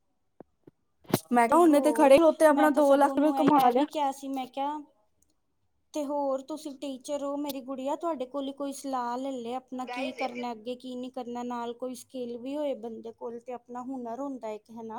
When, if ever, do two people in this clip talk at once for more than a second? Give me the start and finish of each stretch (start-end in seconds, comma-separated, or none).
1.5-3.8